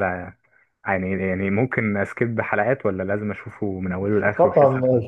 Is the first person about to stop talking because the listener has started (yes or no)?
yes